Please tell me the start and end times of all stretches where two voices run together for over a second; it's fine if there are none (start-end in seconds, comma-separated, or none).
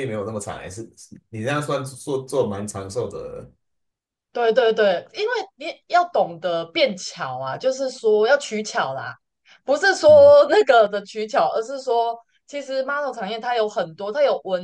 none